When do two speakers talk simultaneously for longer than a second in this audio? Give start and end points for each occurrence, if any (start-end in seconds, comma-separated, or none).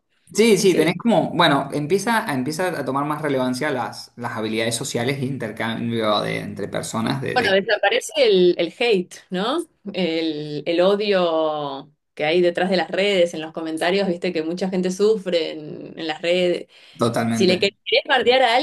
none